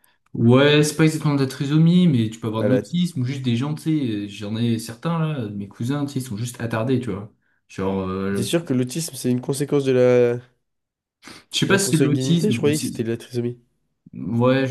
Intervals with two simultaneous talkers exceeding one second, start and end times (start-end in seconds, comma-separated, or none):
11.7-13.1